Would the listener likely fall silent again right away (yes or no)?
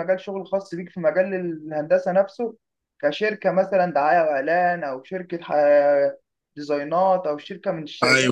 no